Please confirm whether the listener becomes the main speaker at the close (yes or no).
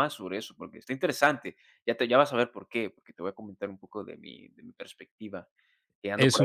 yes